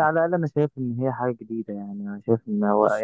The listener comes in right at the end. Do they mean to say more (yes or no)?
no